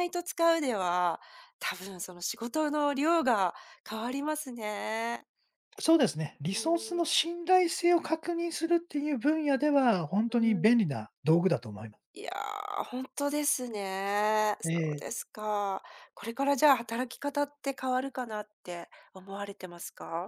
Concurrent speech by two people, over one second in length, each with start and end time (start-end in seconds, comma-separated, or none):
none